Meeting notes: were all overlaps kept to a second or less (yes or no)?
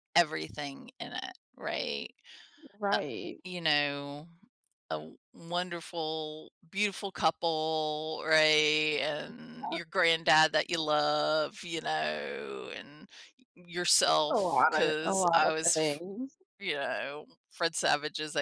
no